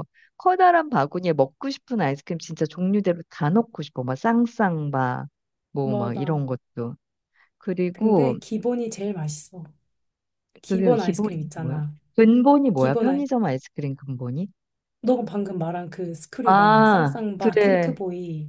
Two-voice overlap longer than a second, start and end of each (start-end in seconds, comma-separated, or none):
10.7-11.9, 16.4-18.0